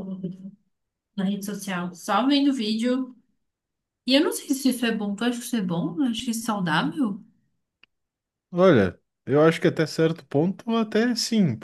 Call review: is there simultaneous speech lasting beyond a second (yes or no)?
no